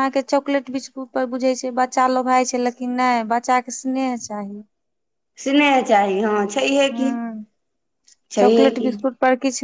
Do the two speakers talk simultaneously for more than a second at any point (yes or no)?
no